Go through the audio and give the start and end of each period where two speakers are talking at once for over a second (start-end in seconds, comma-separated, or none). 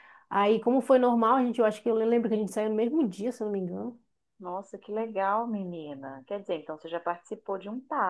none